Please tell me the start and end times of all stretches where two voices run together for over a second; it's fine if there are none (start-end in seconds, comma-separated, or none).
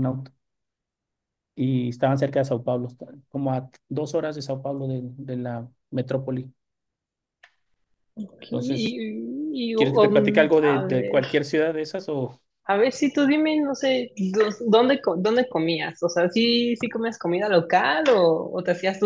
9.8-11.4